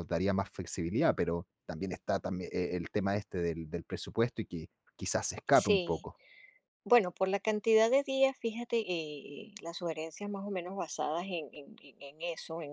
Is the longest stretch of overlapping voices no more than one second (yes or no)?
yes